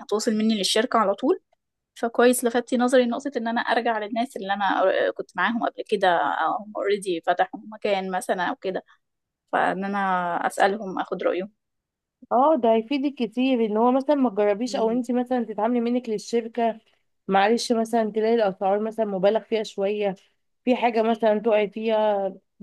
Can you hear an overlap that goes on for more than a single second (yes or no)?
no